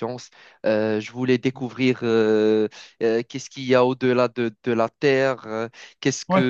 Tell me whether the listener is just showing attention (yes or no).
yes